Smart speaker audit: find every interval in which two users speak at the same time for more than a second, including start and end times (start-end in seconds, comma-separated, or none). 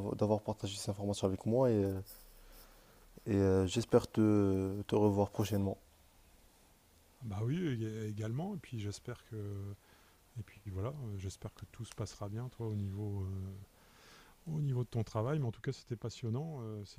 none